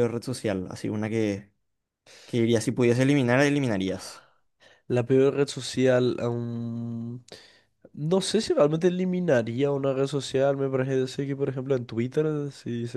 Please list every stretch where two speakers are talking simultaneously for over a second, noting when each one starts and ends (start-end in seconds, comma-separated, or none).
none